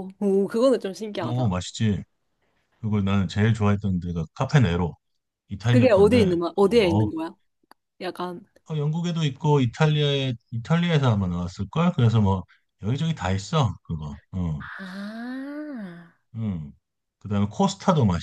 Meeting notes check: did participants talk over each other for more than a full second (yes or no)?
yes